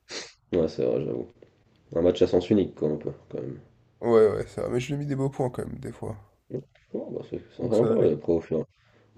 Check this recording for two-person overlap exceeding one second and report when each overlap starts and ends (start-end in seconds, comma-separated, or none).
none